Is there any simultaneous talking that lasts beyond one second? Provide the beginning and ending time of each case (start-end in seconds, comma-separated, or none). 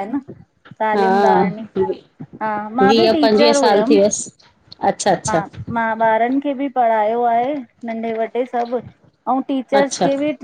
2.8-4.3